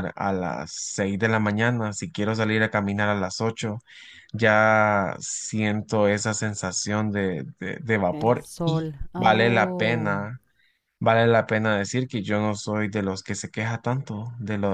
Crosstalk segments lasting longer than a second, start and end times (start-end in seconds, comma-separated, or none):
8.1-10.2